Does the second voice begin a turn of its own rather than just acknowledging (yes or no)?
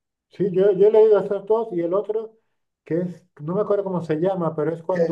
no